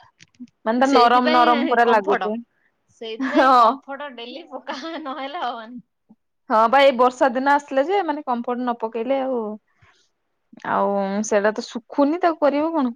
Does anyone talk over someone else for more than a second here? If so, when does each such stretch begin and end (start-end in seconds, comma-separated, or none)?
0.9-2.2